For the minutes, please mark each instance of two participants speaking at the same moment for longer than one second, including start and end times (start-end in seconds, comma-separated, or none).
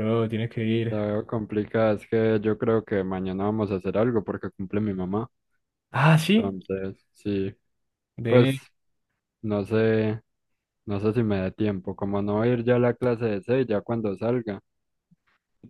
none